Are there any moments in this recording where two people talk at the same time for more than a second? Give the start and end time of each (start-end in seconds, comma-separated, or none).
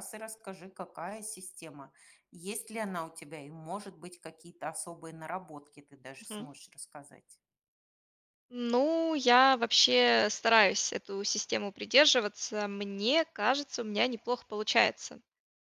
none